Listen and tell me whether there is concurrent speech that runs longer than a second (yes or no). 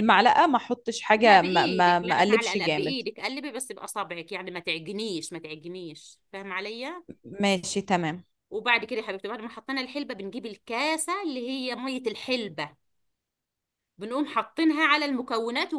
yes